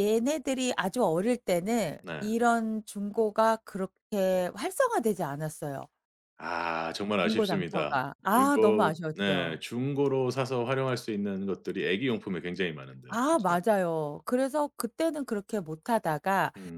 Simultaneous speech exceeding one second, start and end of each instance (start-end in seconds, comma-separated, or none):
7.2-9.6